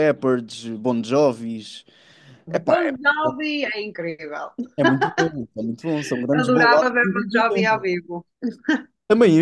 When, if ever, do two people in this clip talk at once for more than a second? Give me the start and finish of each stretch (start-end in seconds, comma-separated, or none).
6.4-7.9